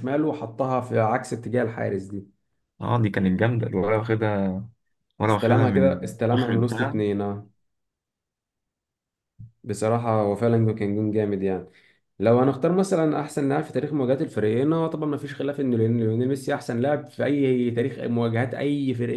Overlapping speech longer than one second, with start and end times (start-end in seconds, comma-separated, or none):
5.3-7.0